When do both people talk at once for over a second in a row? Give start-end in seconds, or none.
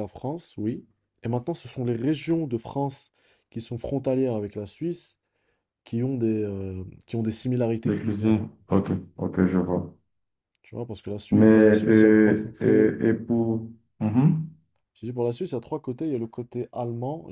11.3-12.9